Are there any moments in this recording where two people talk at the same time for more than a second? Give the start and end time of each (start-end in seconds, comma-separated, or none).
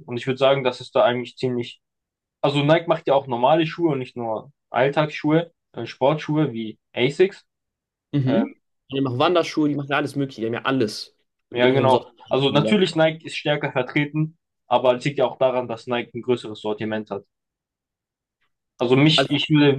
11.5-12.8